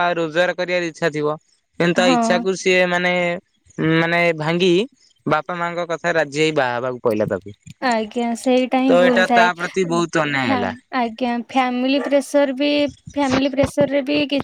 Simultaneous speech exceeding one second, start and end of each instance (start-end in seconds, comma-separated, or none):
7.8-9.5